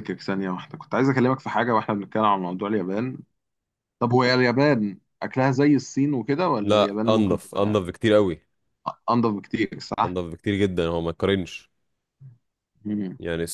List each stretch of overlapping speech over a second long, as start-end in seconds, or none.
6.6-7.8